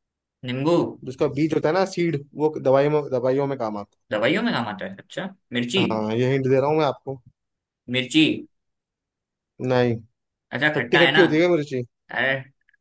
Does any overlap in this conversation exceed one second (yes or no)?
no